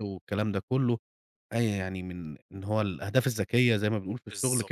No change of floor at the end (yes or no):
yes